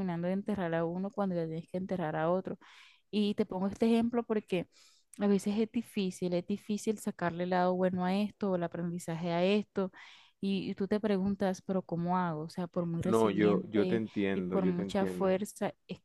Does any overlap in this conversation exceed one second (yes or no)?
yes